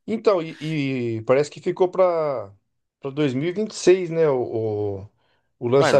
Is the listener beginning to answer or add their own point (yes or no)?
yes